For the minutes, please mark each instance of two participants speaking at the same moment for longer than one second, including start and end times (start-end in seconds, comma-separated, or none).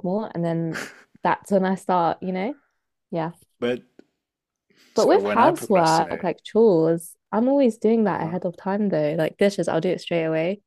5.0-6.3